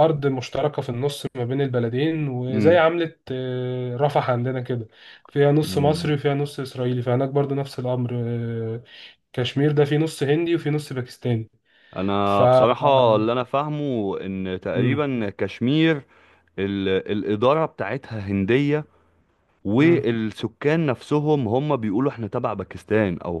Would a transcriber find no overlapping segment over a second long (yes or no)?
yes